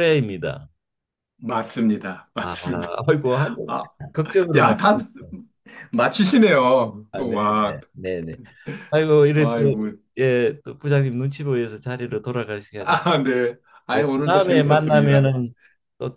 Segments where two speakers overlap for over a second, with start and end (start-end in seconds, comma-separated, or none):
13.9-15.3